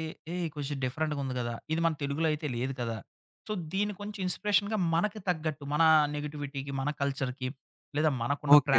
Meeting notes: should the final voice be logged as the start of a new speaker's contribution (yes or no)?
yes